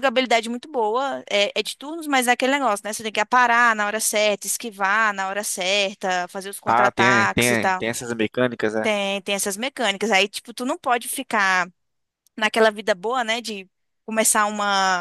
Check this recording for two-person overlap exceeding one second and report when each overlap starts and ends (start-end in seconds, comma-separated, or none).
6.6-7.8